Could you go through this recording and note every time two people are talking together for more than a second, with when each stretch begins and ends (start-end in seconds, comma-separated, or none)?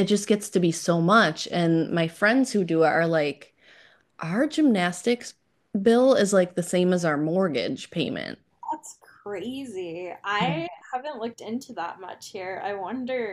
none